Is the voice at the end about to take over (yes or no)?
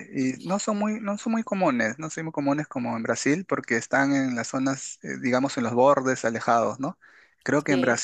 no